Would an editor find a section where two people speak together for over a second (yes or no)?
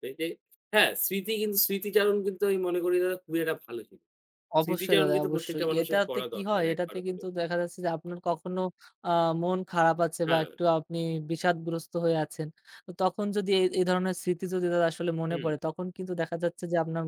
yes